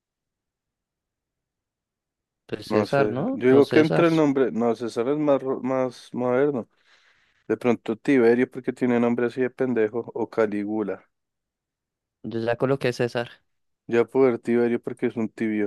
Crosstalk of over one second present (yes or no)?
yes